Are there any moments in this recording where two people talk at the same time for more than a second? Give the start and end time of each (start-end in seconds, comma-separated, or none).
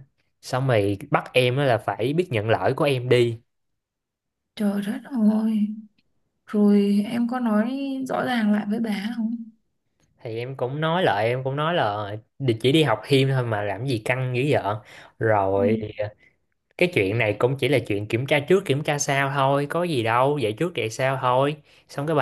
none